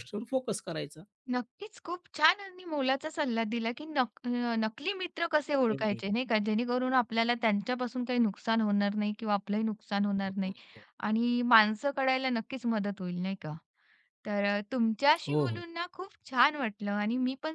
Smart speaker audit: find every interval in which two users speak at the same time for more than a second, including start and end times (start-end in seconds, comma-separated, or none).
none